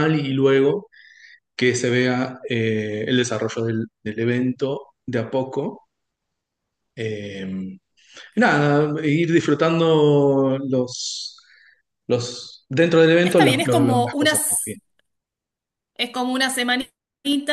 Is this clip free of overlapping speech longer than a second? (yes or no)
no